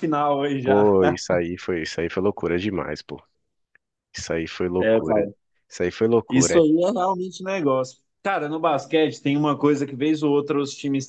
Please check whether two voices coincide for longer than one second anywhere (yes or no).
no